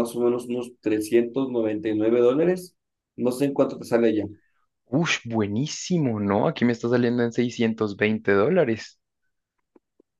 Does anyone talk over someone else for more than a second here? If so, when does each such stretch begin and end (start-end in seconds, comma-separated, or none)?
none